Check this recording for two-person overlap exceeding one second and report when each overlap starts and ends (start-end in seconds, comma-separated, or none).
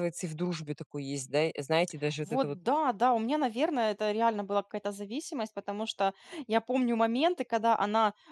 none